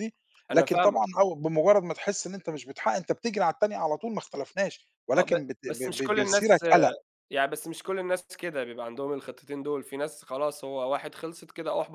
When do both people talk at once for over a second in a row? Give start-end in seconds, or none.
5.2-6.7